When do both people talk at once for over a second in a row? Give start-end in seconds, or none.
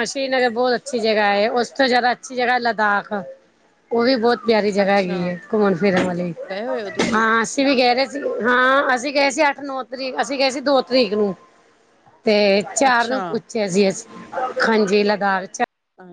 none